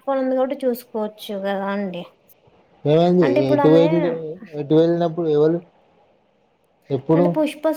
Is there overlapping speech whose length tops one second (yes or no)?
no